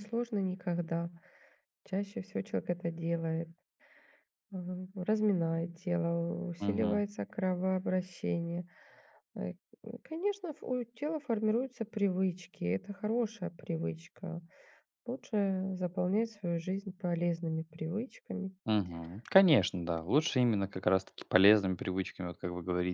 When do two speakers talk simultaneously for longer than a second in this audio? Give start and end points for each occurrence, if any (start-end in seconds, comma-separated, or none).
none